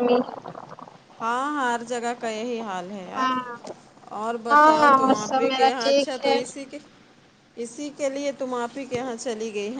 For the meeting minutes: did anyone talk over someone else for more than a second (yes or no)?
yes